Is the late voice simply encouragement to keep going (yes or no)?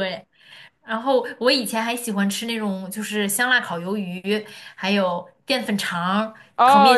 no